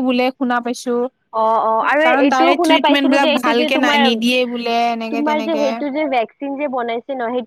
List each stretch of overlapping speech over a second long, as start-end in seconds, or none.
2.0-4.2